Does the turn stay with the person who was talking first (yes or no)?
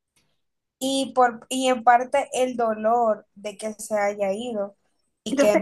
yes